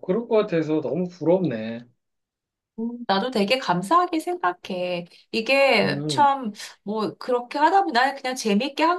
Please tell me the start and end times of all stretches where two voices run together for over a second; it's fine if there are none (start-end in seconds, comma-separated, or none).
none